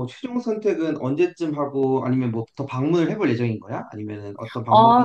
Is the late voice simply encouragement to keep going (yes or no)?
no